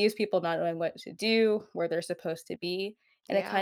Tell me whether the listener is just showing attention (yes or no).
yes